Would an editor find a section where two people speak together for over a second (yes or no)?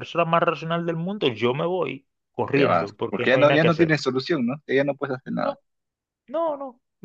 yes